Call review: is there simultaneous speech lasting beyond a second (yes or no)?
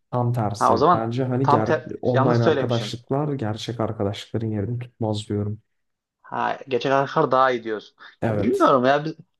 yes